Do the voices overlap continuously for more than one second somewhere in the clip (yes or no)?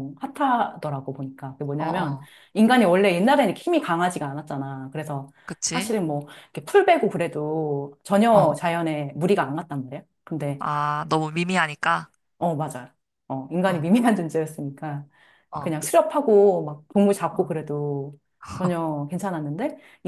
no